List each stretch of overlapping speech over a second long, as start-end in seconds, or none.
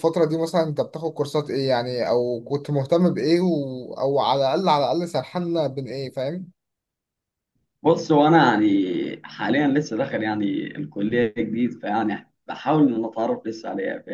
none